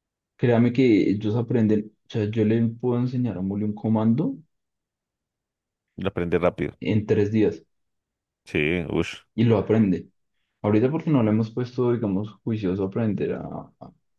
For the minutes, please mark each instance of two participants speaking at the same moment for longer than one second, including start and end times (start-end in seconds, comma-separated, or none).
none